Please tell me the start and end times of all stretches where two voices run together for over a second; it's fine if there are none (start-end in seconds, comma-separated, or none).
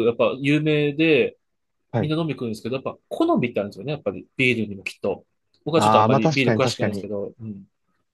5.8-7.1